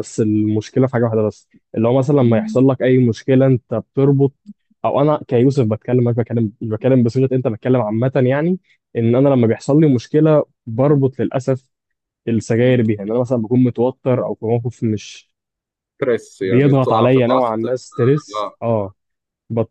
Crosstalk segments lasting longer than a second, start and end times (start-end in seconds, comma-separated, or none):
16.4-18.6